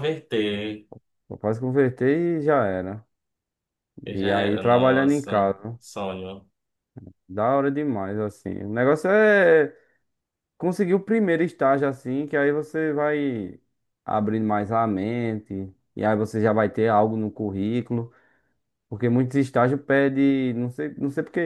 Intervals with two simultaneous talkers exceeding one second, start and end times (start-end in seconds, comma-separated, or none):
4.1-5.8